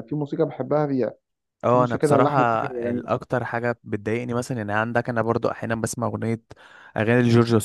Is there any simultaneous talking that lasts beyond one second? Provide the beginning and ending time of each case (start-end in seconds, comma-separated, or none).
1.7-3.1